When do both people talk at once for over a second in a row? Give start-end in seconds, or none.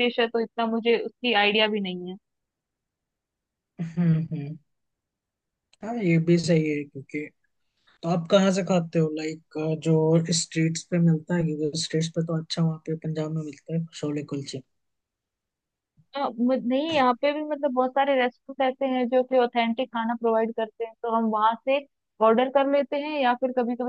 none